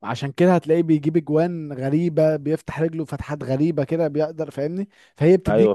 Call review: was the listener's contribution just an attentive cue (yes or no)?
yes